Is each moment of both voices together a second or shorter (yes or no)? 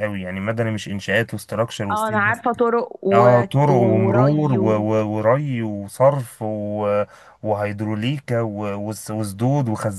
no